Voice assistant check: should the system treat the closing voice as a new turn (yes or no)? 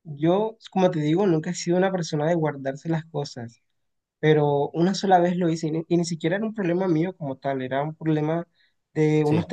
no